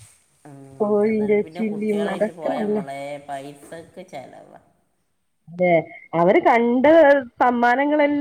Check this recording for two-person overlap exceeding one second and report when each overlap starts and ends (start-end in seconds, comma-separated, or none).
0.8-2.8